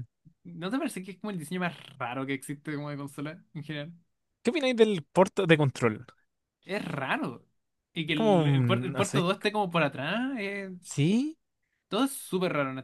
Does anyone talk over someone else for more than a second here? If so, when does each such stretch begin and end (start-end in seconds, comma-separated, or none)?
8.1-9.3